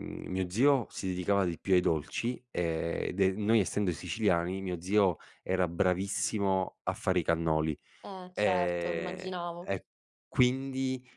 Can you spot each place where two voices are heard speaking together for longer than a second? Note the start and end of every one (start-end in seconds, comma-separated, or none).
8.3-9.7